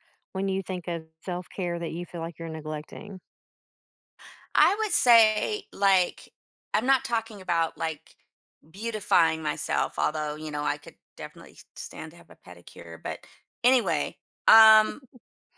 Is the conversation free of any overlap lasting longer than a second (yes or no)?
yes